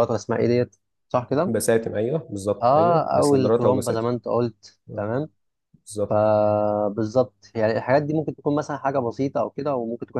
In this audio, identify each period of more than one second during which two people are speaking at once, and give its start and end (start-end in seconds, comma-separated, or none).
2.6-4.1